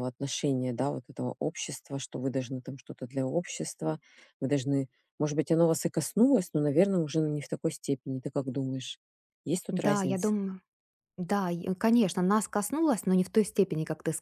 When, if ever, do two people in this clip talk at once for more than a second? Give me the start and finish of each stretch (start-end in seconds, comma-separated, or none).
none